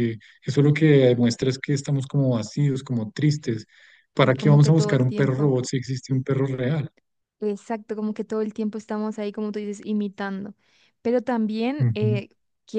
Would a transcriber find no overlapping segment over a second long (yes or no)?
no